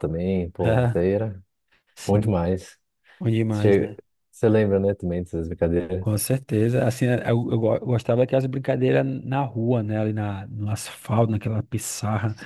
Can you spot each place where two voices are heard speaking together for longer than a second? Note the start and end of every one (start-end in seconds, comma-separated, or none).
none